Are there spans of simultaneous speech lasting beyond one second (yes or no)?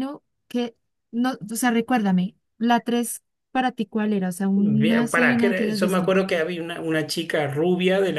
yes